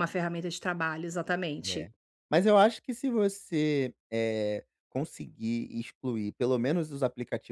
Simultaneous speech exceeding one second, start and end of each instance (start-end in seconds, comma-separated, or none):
none